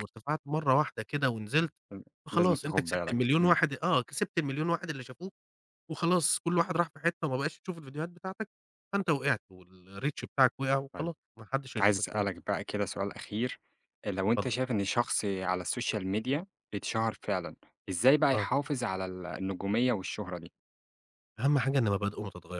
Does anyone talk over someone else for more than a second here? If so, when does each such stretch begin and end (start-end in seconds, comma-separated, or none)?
2.4-3.6